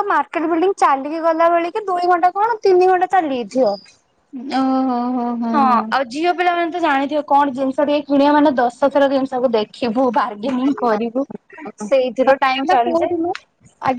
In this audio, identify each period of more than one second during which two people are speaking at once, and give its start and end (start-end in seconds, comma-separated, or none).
11.9-13.1